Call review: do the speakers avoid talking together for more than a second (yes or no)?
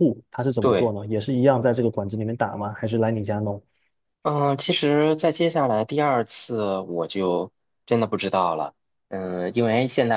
yes